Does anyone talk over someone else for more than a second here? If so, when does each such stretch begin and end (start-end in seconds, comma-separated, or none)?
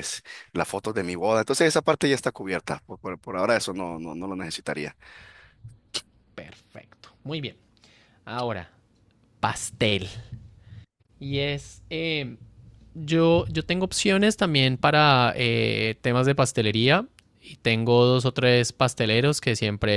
none